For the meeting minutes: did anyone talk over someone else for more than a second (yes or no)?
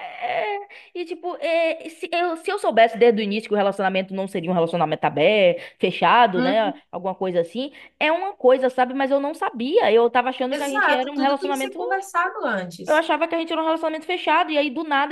yes